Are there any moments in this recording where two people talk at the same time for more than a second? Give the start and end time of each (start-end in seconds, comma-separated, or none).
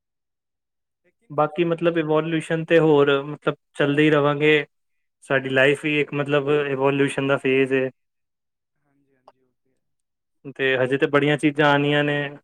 1.4-2.7